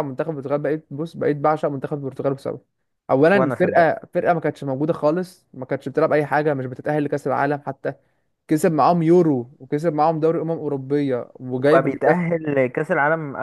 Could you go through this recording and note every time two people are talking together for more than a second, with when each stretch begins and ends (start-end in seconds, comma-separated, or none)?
none